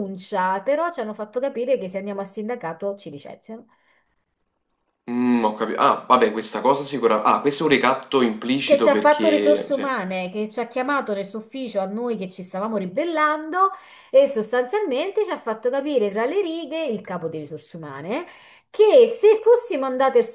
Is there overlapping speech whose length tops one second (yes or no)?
yes